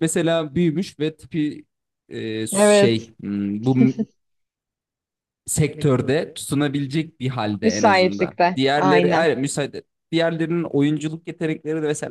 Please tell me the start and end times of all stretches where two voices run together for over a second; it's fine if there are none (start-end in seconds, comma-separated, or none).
7.6-9.3